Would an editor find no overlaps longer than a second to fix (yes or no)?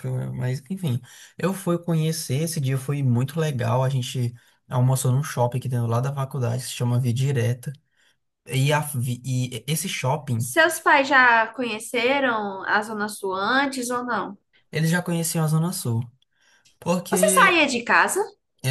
yes